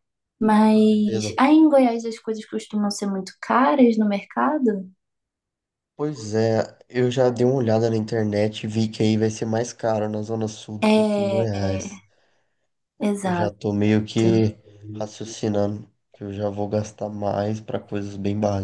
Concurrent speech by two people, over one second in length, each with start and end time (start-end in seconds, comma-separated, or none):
10.8-12.0